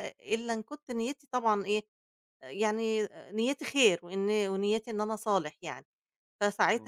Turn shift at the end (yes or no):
yes